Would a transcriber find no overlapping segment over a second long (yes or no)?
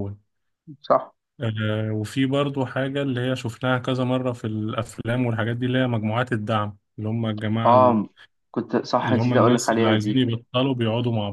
no